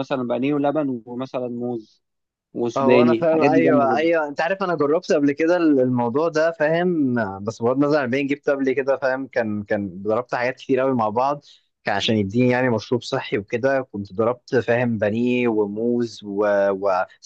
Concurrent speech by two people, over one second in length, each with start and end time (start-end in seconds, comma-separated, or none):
2.8-4.1